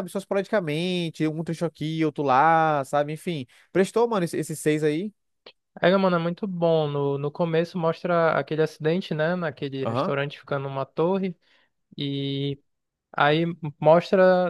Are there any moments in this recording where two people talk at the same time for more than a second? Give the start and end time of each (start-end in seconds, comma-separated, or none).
none